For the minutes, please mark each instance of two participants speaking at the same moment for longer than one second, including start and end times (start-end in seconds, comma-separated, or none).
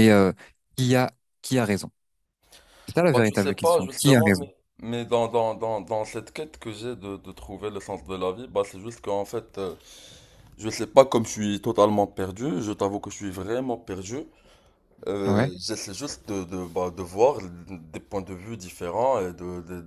3.1-4.5